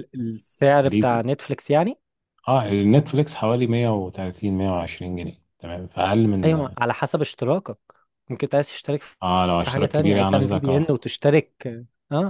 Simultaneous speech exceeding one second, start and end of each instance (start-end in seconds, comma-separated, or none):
9.6-11.1